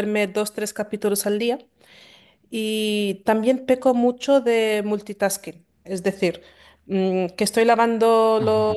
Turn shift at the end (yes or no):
no